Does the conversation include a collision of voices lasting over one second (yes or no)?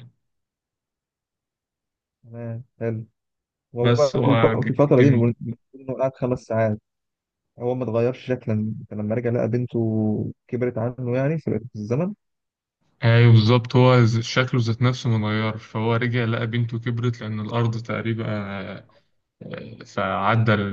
yes